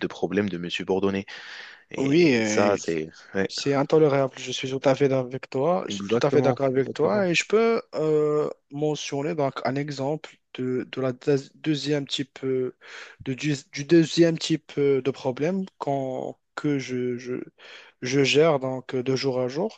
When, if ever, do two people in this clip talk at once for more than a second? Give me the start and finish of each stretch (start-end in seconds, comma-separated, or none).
5.9-7.2